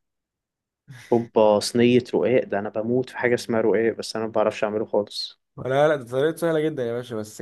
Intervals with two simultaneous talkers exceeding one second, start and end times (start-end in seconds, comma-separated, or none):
none